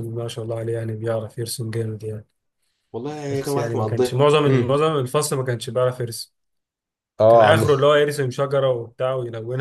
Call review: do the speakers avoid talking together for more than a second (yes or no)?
no